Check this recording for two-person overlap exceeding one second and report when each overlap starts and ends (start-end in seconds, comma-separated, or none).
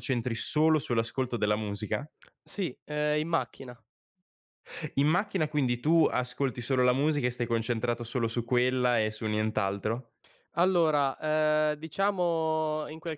none